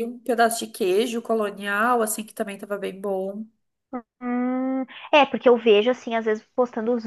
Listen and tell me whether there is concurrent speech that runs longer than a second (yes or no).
no